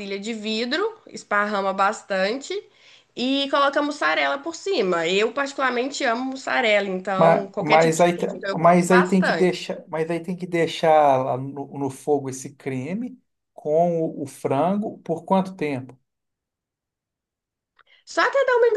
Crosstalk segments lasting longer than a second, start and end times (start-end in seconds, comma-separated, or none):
7.2-9.5